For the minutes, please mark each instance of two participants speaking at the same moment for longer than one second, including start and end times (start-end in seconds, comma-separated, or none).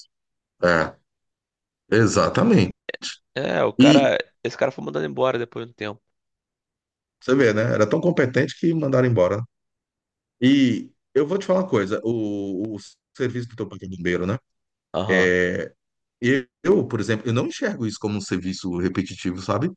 none